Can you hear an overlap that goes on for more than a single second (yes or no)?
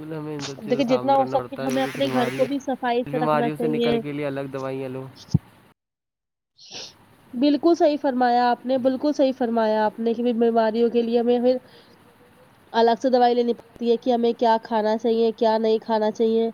yes